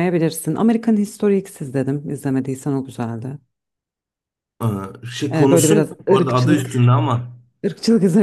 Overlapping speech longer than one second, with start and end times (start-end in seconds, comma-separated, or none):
5.3-6.9